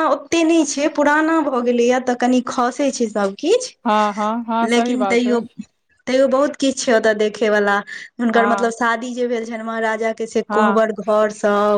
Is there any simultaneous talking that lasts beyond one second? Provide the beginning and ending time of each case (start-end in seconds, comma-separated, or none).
3.9-5.4